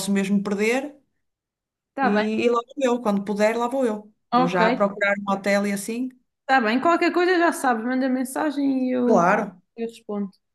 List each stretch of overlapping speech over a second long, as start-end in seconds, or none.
none